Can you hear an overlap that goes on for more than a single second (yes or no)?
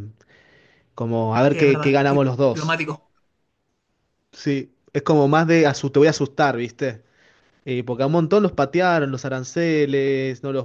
yes